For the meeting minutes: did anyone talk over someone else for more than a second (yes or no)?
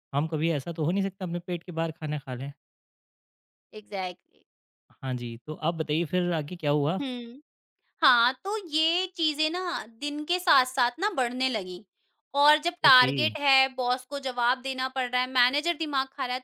no